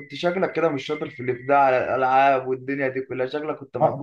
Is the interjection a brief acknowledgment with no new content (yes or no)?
no